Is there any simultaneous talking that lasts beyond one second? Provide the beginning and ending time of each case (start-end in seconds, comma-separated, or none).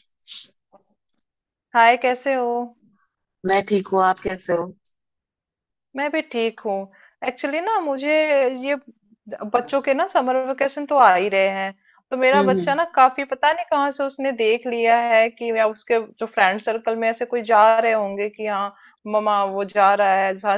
none